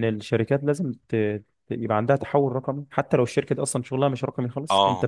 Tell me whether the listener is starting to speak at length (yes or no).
yes